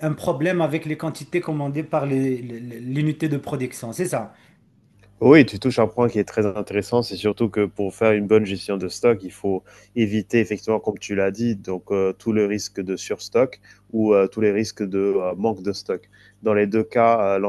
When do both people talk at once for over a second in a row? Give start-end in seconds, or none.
none